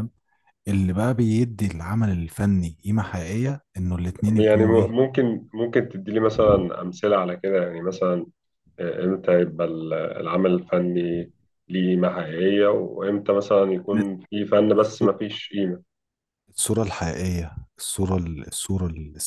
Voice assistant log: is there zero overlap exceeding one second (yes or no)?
yes